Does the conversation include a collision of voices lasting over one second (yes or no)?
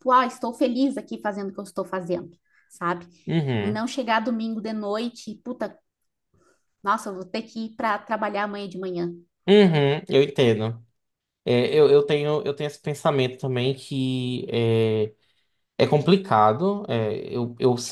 no